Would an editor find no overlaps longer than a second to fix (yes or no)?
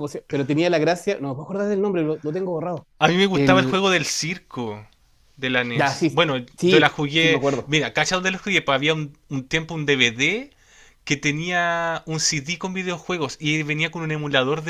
no